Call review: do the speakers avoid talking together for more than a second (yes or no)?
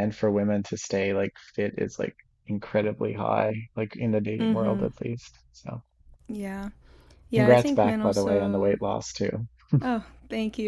no